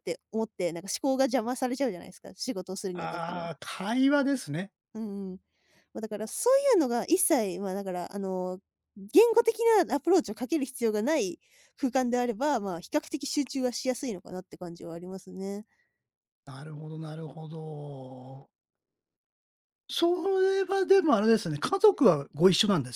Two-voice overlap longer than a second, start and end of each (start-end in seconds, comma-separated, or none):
none